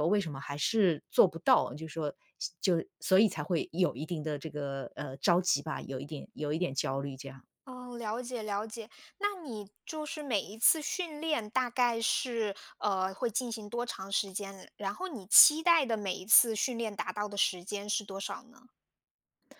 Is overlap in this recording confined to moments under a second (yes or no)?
yes